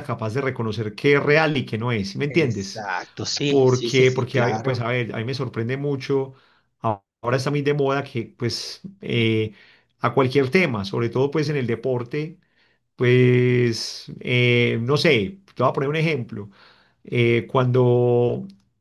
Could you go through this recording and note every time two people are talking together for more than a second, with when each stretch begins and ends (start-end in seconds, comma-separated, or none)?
3.5-4.8